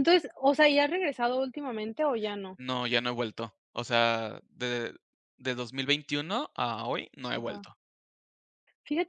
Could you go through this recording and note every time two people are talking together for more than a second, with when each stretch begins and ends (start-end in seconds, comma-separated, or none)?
none